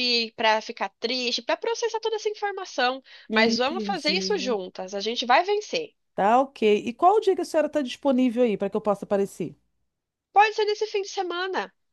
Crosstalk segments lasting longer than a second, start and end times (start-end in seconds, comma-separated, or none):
3.3-4.6